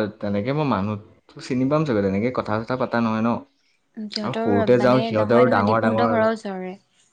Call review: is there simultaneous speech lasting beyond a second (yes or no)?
yes